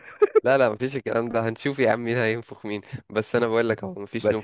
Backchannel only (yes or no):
no